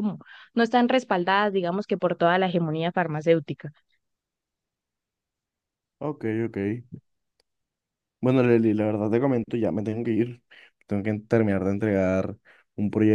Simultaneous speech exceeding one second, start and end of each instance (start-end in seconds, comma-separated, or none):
none